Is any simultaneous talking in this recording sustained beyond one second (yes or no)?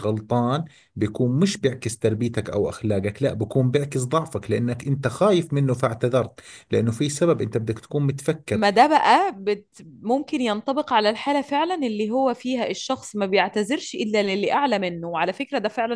no